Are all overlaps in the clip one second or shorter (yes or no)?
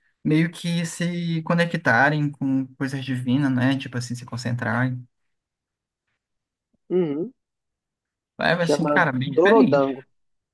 no